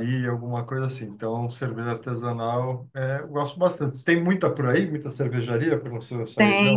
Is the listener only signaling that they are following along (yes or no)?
no